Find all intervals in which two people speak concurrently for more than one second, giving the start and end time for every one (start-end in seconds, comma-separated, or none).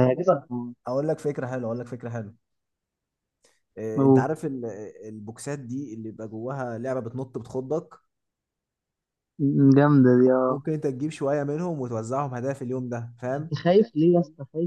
none